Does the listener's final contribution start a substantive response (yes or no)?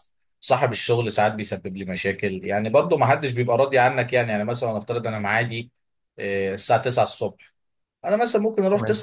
no